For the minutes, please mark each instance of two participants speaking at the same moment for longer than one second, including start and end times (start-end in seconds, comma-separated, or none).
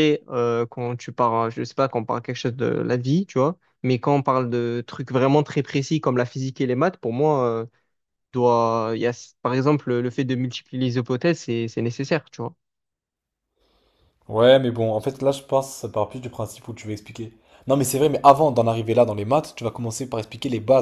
none